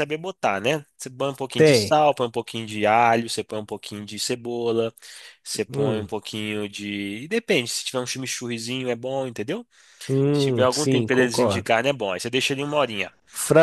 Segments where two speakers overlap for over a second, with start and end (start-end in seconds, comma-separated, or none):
10.3-11.7